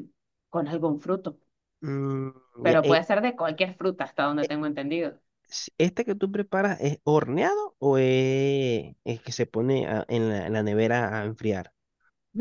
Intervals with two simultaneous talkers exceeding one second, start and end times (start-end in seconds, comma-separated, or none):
none